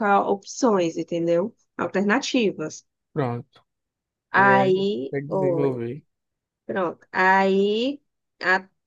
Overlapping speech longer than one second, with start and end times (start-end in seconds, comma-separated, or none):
4.3-5.8